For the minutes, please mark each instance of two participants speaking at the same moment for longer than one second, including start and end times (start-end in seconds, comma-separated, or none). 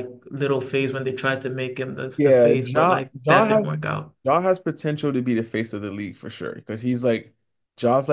2.2-3.7